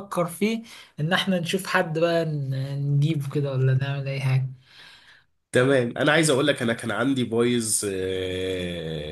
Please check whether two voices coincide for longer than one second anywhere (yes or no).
no